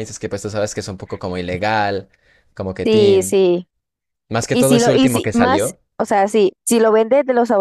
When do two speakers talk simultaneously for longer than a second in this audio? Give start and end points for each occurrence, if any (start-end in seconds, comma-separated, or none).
4.5-5.8